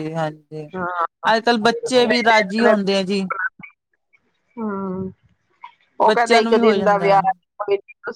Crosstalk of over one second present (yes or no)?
yes